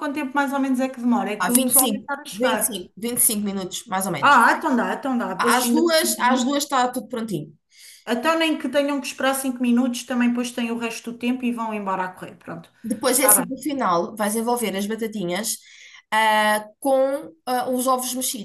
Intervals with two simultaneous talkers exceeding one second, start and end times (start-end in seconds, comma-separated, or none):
1.4-2.9